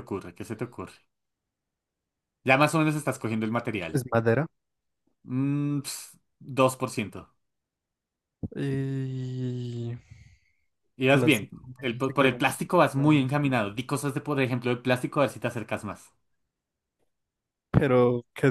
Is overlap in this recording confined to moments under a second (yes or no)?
no